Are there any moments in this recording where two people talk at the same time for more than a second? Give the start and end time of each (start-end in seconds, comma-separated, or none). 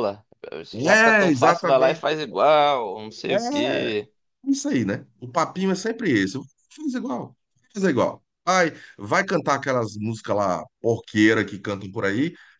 0.7-2.0